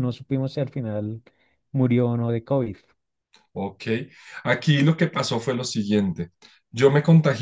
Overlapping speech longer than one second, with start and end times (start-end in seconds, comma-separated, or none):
none